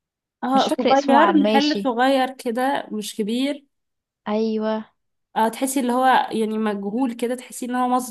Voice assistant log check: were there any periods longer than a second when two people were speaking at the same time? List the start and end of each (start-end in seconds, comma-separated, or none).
0.5-1.9